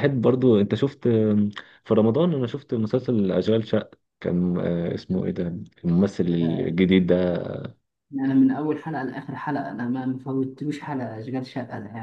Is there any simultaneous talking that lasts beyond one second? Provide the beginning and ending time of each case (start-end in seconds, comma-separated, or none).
none